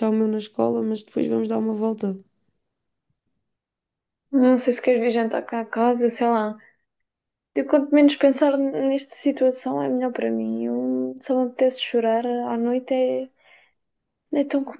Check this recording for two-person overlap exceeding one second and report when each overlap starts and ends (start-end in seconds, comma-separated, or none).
none